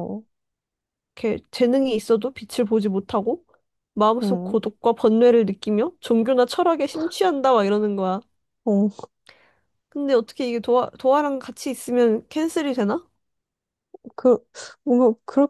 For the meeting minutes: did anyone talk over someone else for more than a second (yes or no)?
no